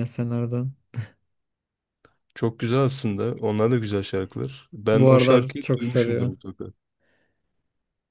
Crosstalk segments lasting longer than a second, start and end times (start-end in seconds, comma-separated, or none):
4.9-6.3